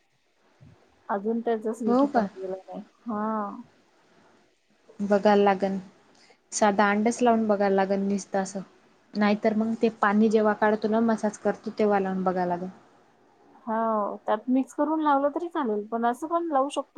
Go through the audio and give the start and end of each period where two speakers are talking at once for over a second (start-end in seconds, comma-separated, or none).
none